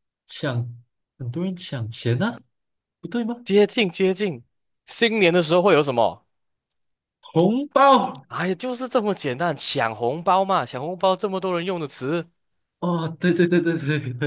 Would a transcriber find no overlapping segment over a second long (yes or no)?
yes